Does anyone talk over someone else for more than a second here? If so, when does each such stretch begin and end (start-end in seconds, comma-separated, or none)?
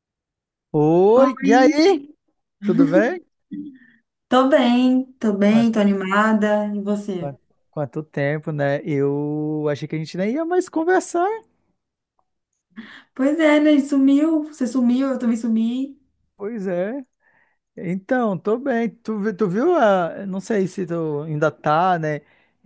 none